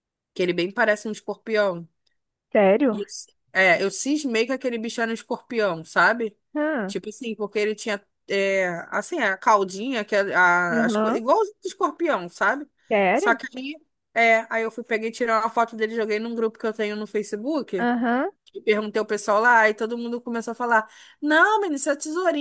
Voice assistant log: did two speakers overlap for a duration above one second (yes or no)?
no